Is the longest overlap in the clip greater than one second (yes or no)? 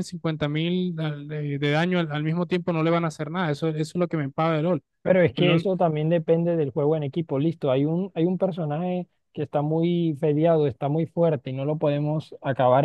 no